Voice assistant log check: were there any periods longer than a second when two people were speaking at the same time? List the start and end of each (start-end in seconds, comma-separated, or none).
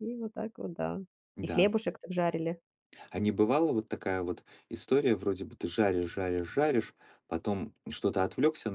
none